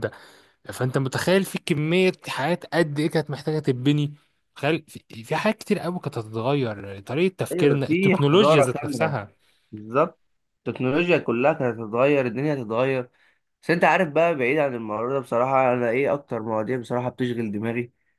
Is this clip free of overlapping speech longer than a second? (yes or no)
no